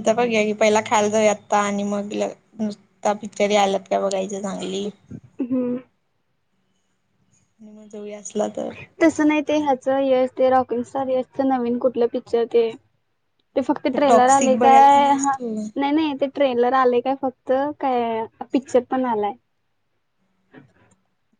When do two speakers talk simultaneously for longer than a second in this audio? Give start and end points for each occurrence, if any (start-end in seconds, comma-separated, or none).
13.9-15.3